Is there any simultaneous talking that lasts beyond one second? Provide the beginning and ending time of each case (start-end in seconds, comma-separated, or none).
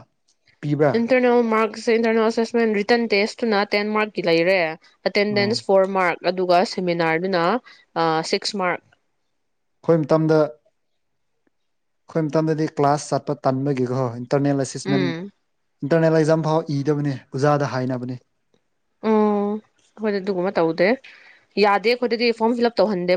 none